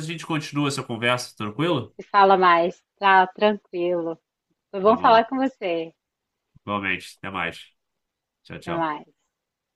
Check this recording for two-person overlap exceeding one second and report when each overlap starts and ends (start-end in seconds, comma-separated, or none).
none